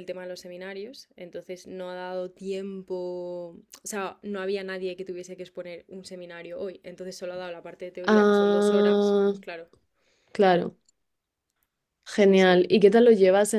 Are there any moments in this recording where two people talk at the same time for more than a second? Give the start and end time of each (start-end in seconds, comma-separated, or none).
8.0-9.3